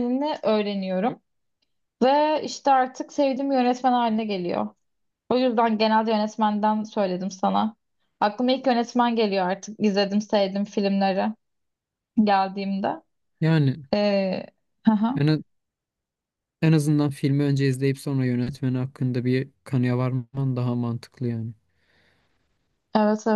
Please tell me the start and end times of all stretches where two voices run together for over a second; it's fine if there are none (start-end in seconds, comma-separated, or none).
none